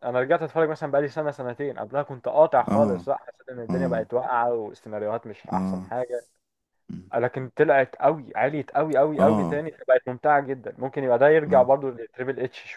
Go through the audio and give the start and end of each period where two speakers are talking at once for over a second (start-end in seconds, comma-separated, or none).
none